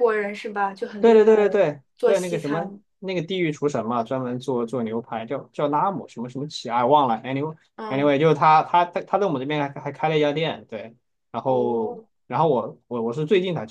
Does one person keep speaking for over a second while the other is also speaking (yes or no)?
yes